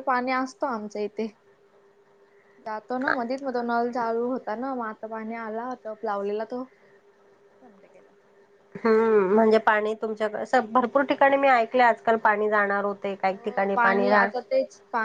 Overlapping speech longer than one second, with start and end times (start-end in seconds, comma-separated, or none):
none